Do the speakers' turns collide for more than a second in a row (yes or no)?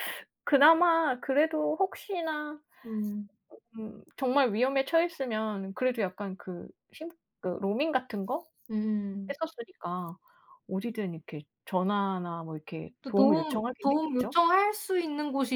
yes